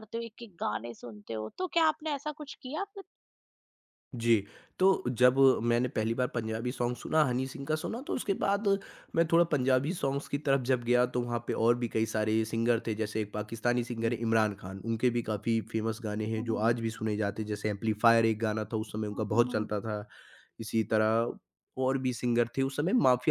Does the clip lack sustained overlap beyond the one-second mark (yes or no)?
yes